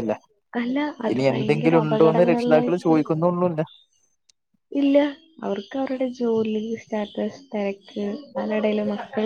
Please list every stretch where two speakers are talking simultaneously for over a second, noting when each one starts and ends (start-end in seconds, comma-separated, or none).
1.1-3.0